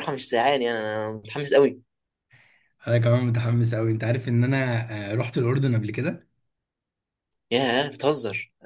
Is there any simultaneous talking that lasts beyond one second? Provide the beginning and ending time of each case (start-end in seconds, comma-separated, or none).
none